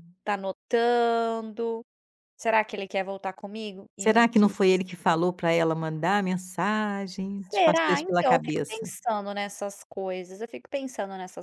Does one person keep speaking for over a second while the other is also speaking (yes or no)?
yes